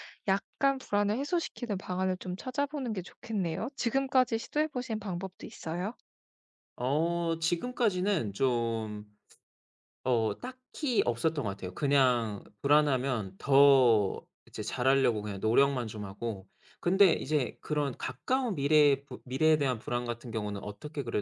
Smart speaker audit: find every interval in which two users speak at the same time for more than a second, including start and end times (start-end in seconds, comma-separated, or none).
none